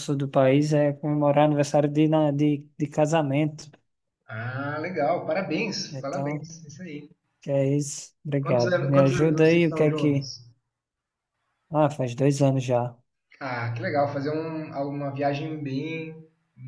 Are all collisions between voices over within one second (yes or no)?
no